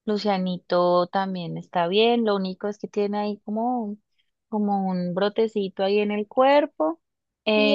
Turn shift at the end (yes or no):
yes